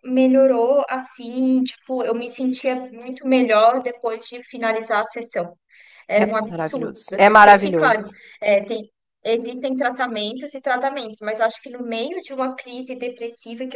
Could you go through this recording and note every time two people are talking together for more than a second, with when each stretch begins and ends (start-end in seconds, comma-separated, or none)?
6.2-8.2